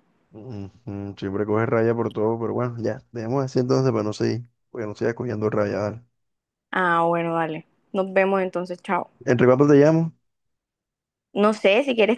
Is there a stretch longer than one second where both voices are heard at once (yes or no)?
no